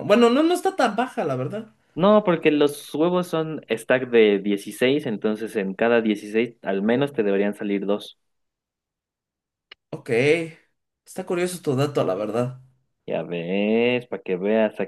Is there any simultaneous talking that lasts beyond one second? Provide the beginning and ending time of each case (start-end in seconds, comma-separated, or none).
none